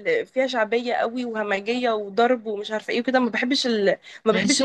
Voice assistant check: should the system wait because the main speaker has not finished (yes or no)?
yes